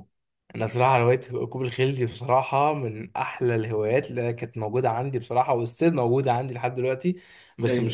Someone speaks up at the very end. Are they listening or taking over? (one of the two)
listening